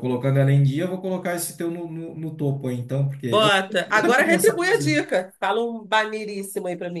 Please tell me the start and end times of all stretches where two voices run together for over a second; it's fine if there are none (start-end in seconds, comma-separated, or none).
3.3-5.0